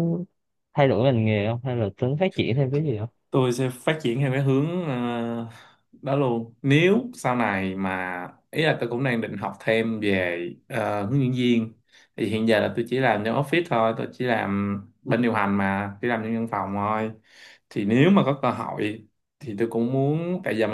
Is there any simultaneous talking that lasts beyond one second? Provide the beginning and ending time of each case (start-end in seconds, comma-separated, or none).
none